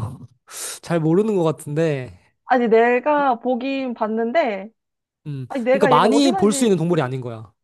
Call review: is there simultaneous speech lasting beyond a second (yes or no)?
yes